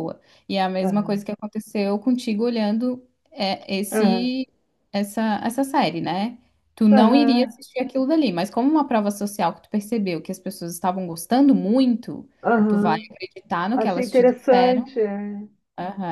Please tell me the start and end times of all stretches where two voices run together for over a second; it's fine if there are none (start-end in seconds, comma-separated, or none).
13.7-15.0